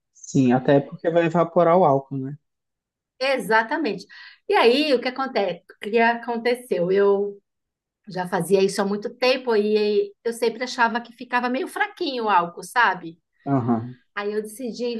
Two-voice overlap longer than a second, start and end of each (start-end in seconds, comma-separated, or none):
none